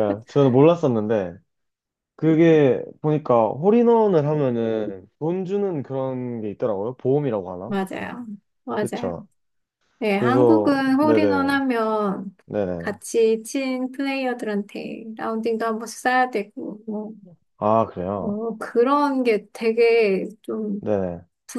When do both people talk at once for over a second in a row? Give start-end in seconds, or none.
10.1-11.5